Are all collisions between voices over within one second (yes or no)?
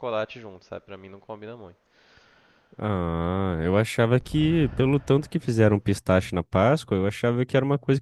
yes